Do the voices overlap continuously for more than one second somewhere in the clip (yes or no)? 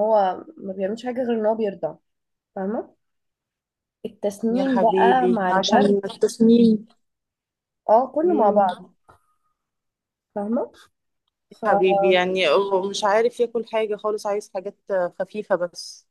yes